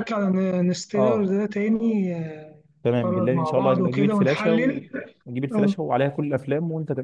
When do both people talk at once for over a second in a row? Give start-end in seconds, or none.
3.0-4.8